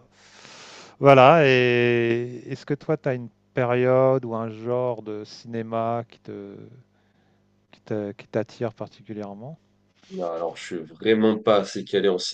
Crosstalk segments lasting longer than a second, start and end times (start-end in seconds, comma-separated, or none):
none